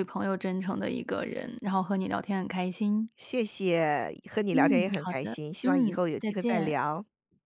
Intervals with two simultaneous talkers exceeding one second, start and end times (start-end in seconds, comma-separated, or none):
4.5-6.8